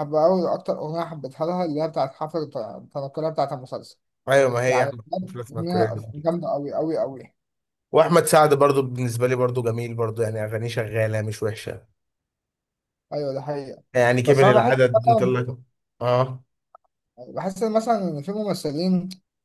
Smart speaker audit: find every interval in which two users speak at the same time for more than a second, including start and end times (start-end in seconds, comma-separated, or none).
4.7-6.3